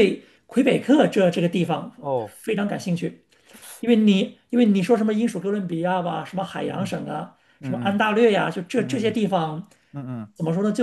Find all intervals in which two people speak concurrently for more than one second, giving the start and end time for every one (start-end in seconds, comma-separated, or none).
none